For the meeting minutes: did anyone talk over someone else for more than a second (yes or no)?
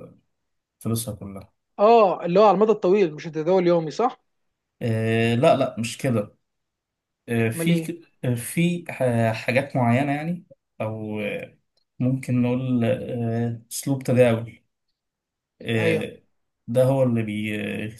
no